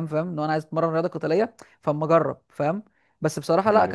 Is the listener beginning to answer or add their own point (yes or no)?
no